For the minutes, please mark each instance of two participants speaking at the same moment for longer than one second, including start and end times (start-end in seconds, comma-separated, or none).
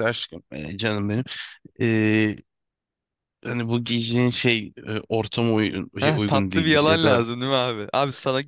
6.0-7.3